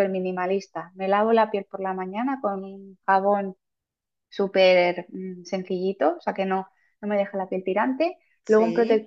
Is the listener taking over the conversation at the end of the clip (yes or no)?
no